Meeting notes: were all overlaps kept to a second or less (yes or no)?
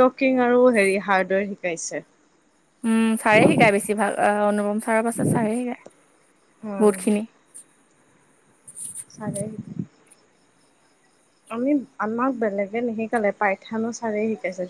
yes